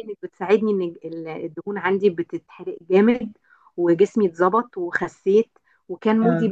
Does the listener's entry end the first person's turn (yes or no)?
no